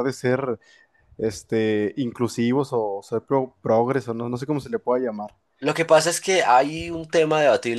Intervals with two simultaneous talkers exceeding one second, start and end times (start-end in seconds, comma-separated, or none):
none